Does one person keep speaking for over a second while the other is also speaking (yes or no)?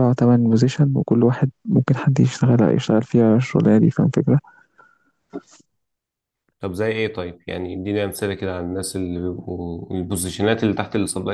no